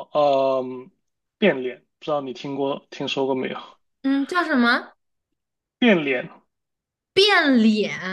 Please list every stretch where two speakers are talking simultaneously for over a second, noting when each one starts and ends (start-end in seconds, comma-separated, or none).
none